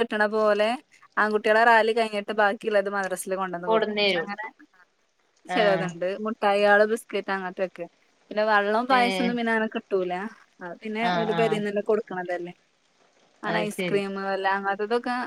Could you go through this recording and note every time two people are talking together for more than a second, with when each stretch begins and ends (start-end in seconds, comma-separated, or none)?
none